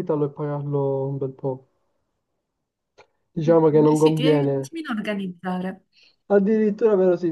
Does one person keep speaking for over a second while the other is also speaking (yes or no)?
yes